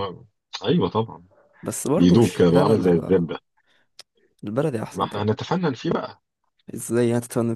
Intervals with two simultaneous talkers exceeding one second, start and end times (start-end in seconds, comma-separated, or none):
2.0-3.3